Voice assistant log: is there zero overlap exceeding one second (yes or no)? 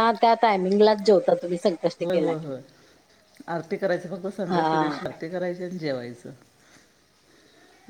yes